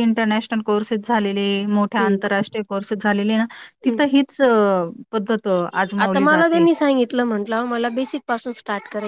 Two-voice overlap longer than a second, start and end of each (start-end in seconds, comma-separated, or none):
none